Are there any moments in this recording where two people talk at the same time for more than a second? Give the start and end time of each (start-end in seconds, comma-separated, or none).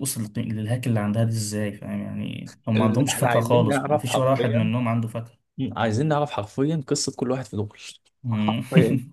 2.8-4.7